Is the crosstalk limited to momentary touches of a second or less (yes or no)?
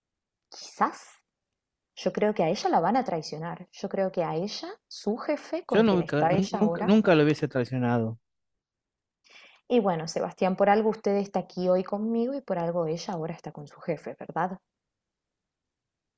no